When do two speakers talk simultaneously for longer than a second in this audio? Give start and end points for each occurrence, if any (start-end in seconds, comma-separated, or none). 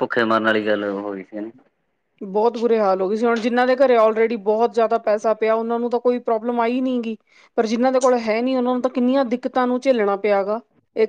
none